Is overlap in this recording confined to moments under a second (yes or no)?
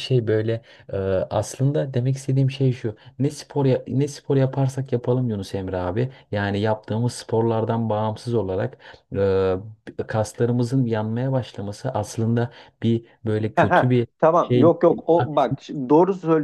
no